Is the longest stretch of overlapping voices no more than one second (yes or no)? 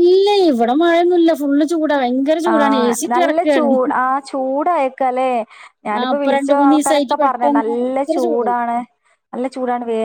no